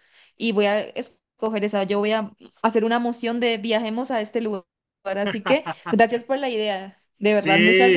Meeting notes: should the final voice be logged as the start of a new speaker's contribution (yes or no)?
yes